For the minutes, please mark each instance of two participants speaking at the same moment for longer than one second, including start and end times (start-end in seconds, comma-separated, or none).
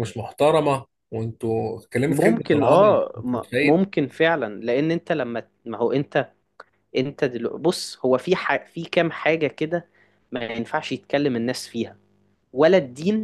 2.1-3.8